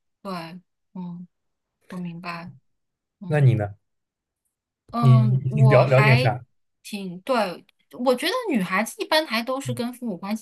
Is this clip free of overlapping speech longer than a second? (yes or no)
no